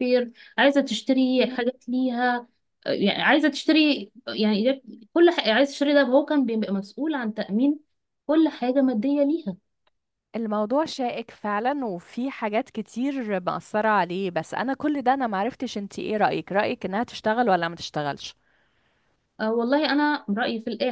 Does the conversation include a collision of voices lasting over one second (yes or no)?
no